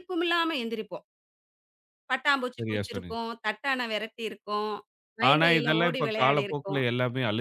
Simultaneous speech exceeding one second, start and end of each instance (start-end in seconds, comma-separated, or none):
5.3-6.8